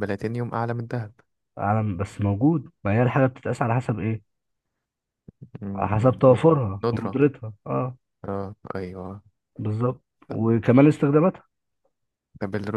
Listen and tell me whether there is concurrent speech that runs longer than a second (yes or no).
yes